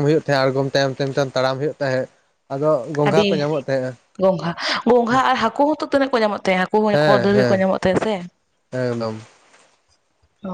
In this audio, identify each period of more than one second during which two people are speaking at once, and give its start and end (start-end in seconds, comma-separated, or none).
none